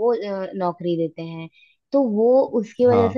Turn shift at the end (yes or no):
no